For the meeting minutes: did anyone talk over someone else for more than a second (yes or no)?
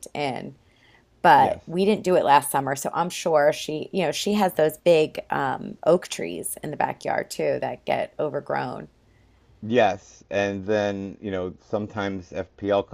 no